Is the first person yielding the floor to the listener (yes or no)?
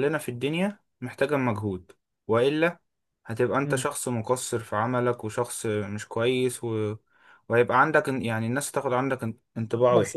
yes